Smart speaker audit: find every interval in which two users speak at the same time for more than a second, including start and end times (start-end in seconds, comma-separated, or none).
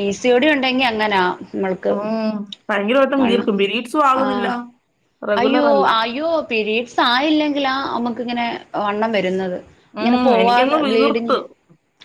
10.0-11.3